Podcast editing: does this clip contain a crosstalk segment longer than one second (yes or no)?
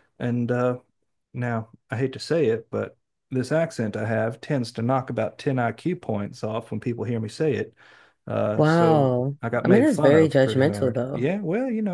yes